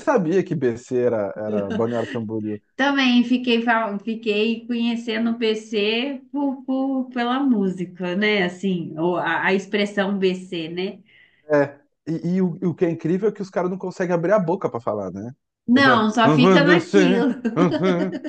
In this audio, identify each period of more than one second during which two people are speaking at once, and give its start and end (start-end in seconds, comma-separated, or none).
15.7-17.4